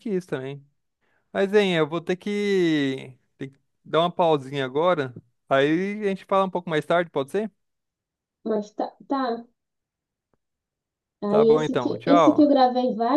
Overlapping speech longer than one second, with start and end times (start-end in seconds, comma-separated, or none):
11.3-12.5